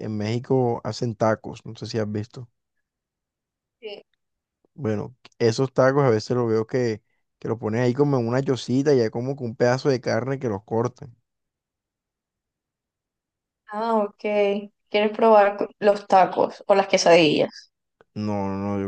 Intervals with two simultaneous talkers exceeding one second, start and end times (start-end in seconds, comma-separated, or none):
none